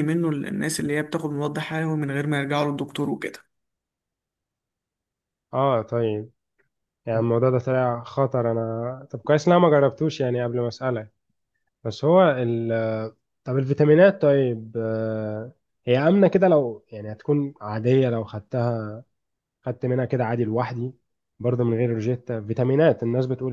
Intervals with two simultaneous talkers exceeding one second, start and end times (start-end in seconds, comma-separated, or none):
none